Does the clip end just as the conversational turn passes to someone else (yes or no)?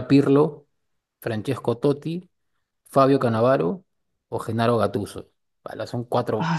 yes